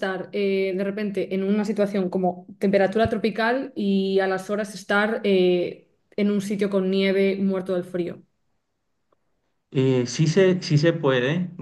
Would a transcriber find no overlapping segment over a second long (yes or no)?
yes